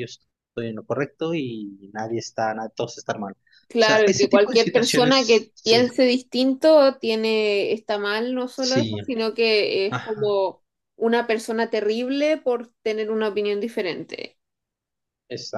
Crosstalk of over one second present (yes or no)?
yes